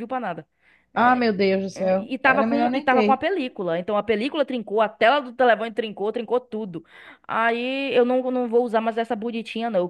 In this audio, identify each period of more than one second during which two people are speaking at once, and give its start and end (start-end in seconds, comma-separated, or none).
1.7-3.2